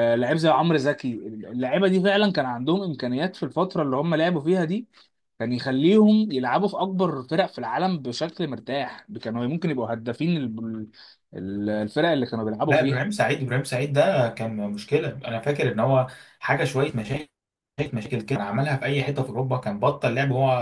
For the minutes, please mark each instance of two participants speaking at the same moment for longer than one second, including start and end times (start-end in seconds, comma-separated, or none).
none